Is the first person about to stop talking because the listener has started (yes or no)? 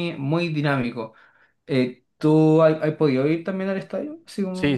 yes